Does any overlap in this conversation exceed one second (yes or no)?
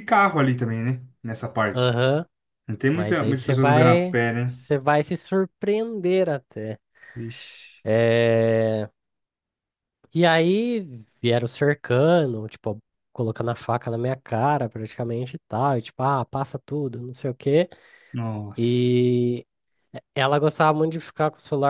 yes